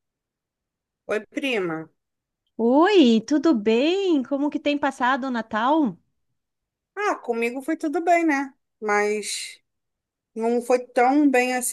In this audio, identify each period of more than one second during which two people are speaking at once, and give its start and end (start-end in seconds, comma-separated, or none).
none